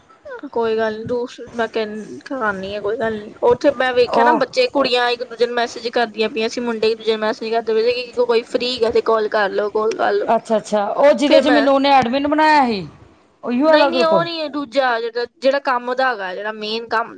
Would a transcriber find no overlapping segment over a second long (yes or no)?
yes